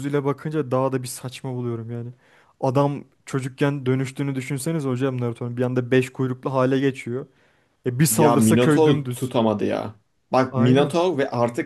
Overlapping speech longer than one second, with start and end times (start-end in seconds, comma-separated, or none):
8.1-9.3